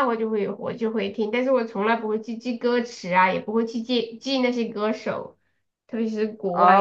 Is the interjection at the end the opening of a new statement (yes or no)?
yes